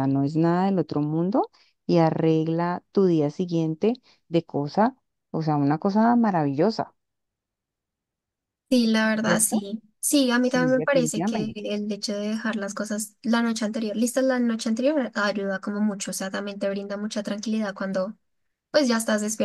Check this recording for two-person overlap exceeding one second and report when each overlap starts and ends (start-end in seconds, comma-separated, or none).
10.4-11.6